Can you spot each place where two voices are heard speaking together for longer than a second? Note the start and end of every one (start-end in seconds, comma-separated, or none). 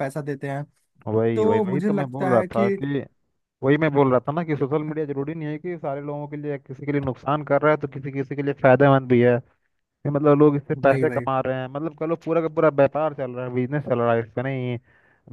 1.3-2.7